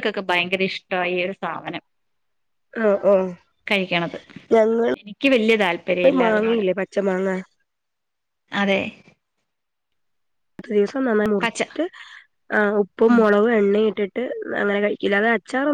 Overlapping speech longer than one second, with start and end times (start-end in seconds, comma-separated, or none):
5.0-6.6